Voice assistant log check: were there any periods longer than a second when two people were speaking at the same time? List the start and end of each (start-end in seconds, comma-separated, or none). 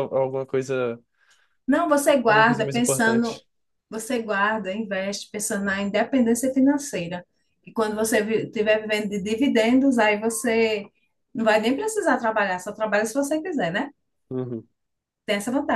2.1-3.4